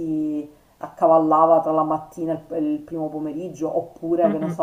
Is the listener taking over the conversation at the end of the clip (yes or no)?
no